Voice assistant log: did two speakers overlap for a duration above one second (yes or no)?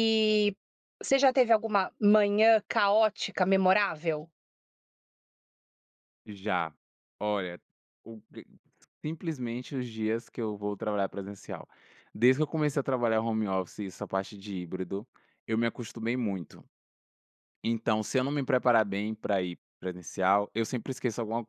no